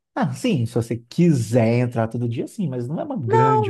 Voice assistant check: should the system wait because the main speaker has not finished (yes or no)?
no